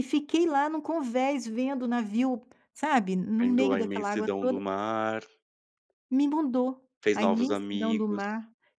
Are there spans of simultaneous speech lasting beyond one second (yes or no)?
yes